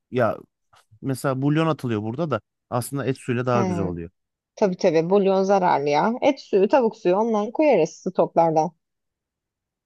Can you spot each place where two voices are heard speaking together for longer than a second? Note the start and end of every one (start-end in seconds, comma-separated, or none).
none